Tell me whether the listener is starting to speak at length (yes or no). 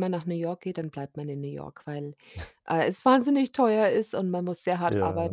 no